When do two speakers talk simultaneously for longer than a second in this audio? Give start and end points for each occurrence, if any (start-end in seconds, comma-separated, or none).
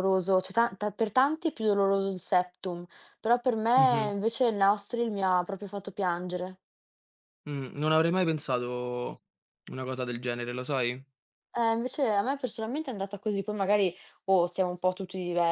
none